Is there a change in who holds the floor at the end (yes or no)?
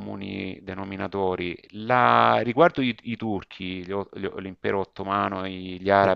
no